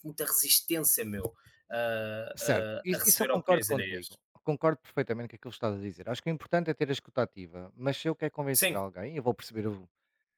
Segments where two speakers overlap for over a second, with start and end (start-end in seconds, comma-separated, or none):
2.4-4.1